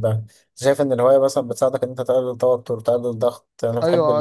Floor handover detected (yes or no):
yes